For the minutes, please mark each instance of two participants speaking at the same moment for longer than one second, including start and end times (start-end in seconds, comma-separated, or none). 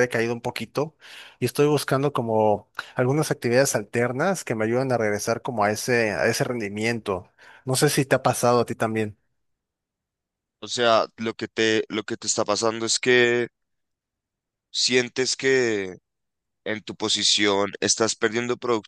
none